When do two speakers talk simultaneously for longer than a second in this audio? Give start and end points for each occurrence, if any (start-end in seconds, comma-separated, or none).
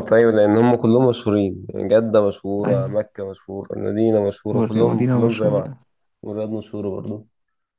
4.5-5.8